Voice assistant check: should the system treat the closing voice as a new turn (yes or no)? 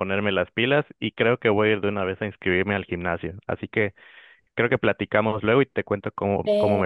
yes